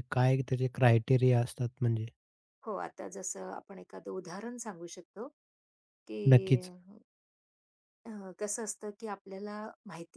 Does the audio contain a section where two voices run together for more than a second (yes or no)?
no